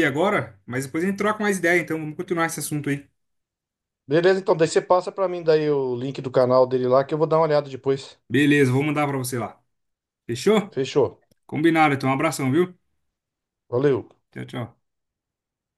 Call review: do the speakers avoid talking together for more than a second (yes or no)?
yes